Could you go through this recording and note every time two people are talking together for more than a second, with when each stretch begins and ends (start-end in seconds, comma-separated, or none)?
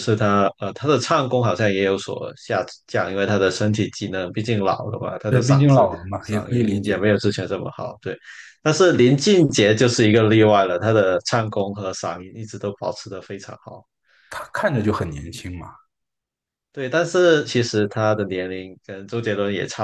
5.3-7.1